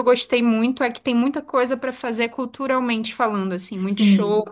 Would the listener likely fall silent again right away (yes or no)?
no